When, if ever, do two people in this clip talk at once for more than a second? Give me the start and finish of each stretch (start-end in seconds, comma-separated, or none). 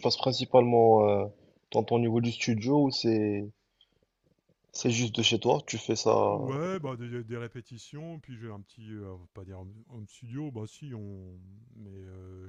none